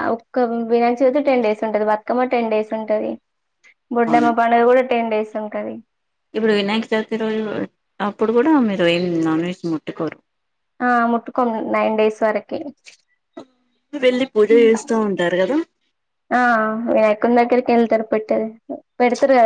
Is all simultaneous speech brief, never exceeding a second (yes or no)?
yes